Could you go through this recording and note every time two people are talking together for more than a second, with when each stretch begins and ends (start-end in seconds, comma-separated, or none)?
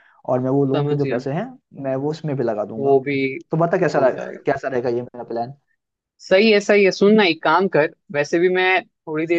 none